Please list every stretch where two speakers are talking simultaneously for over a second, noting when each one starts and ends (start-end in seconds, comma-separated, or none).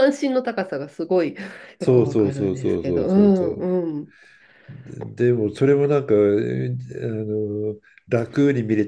1.8-3.6